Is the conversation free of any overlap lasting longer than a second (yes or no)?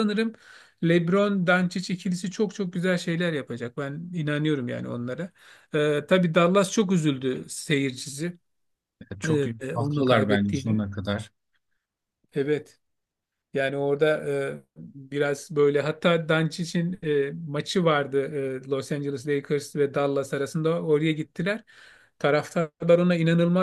no